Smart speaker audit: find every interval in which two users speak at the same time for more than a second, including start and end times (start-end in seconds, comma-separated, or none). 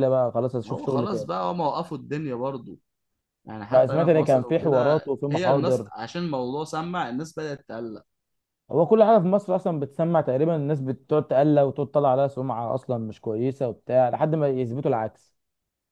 3.7-5.9